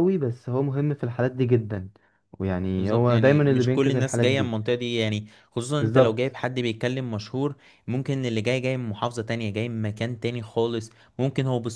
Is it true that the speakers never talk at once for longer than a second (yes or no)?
no